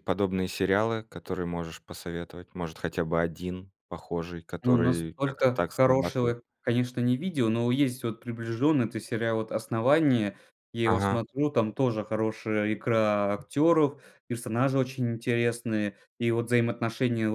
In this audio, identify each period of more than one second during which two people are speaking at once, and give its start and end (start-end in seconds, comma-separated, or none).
4.6-6.4